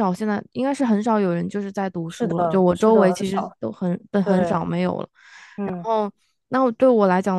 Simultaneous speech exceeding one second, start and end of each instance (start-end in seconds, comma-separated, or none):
2.1-3.6